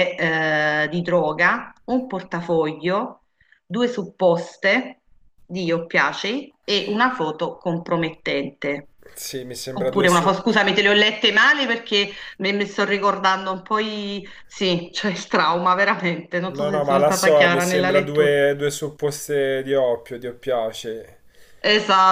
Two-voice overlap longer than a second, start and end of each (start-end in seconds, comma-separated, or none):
16.6-18.4